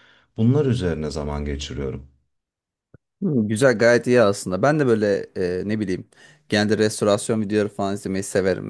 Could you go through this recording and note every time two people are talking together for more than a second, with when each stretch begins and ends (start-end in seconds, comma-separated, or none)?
none